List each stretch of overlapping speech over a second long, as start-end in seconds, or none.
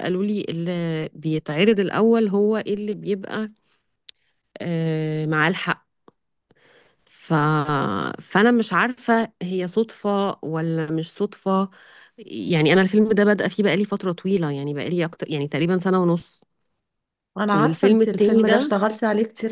17.5-18.7